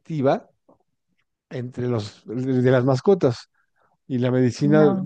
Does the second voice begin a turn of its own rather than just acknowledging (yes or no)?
no